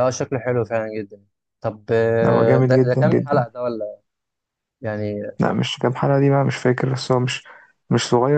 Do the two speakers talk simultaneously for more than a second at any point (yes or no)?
yes